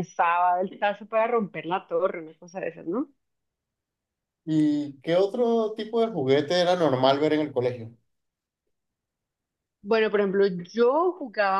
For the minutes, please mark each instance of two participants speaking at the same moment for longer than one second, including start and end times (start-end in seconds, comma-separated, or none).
none